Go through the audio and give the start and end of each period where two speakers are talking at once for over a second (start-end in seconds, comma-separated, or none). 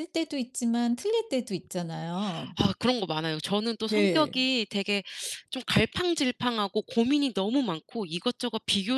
none